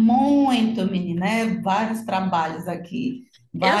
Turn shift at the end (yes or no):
yes